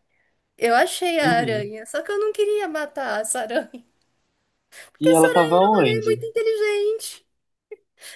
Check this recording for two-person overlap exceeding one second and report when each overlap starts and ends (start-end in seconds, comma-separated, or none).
5.0-6.2